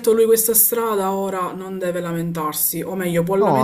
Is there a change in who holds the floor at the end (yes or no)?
no